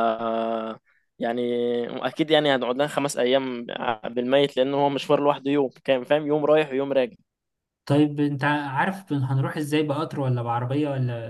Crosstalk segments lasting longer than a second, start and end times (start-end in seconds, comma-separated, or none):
none